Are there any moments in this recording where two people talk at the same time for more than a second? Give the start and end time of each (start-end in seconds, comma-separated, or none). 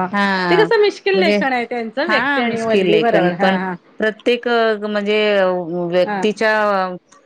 2.1-3.5